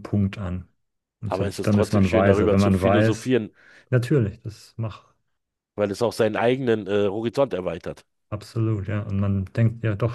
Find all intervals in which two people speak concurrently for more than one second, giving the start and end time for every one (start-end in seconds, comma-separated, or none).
1.3-3.3